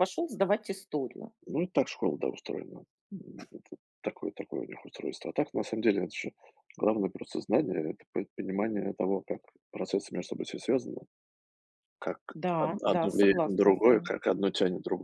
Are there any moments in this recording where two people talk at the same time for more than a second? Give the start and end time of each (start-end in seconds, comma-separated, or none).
12.6-14.1